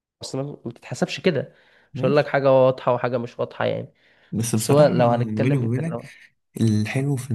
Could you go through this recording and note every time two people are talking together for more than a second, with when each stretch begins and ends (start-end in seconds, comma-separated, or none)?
4.5-6.0